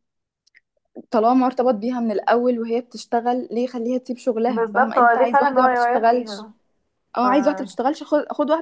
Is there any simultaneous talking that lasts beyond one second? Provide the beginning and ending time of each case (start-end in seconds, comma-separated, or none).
4.5-6.5